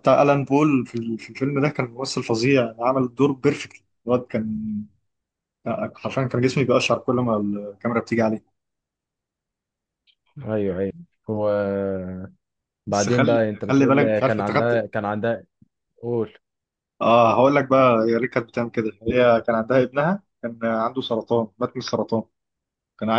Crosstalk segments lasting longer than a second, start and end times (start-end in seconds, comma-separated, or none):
12.9-14.8